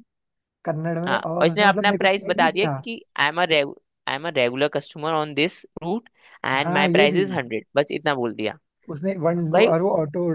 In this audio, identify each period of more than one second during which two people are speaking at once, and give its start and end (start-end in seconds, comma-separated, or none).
1.1-2.8